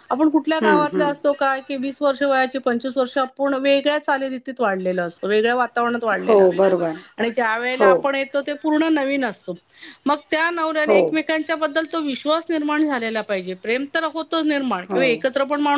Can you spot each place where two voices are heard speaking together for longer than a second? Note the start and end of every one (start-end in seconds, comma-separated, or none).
none